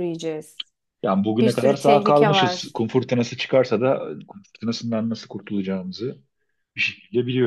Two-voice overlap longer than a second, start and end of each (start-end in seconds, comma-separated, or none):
1.4-2.7